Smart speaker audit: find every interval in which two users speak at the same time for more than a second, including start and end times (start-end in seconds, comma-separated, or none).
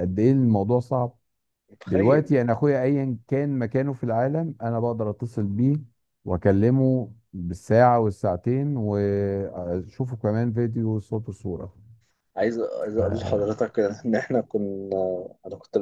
none